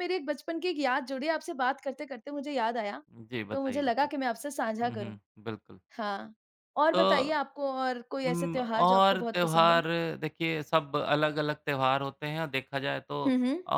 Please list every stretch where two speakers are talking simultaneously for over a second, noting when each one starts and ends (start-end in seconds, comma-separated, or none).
8.3-9.8